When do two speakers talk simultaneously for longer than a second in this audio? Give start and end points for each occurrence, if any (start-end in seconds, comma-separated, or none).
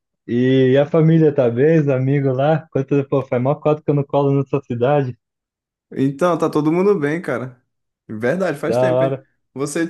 none